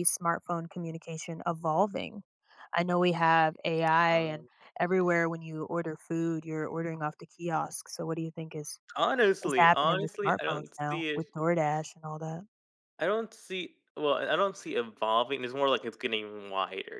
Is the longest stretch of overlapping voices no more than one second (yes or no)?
no